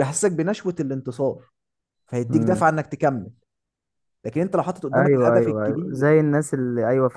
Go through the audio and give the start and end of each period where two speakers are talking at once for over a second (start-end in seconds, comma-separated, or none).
4.9-6.2